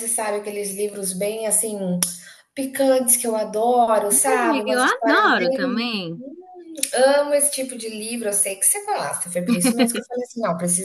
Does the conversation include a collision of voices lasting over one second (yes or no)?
yes